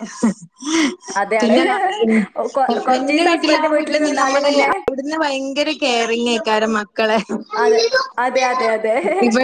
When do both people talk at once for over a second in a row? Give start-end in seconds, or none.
2.9-4.7